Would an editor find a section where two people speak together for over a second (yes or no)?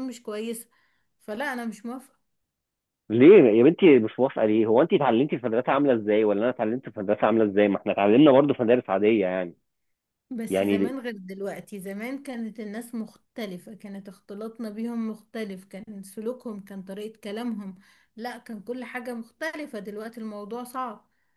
no